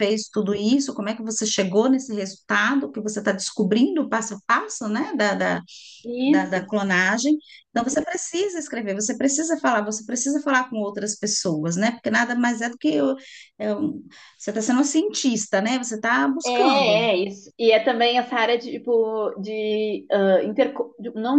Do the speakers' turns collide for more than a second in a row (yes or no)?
no